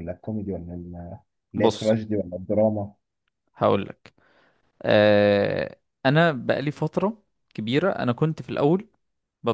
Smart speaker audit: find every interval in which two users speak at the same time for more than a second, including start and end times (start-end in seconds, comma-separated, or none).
none